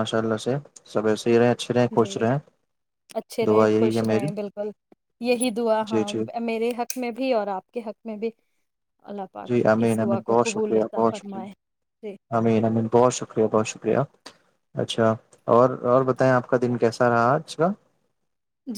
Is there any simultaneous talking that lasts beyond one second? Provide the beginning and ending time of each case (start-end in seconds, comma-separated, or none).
9.5-11.4